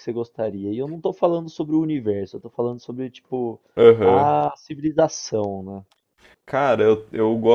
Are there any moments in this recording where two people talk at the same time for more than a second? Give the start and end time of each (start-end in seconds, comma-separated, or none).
none